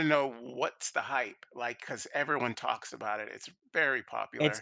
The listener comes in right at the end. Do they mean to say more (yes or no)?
yes